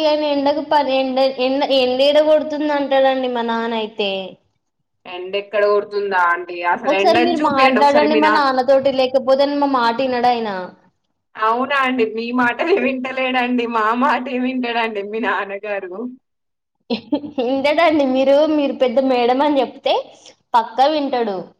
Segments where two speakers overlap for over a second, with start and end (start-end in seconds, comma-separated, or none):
none